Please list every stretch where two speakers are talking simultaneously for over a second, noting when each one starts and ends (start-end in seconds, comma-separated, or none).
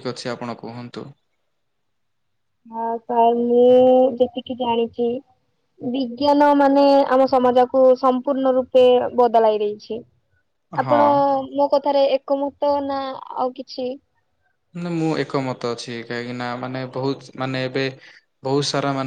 none